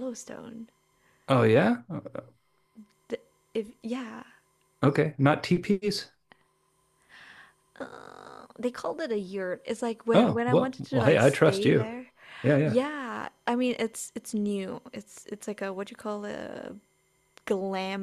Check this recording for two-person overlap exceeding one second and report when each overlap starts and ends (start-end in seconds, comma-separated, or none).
10.1-11.9